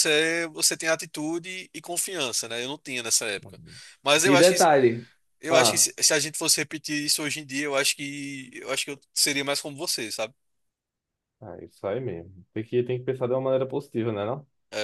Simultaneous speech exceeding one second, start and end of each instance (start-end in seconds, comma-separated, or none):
none